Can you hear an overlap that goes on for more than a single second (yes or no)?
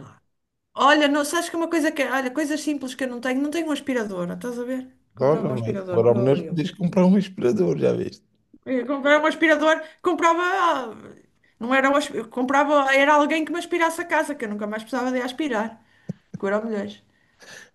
yes